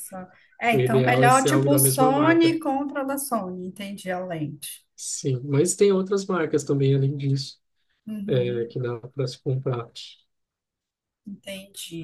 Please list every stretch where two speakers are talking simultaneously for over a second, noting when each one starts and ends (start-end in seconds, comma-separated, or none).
0.7-2.6